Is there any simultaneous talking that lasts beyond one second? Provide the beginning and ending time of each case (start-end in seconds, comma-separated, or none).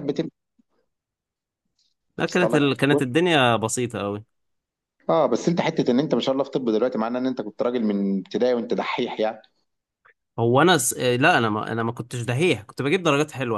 none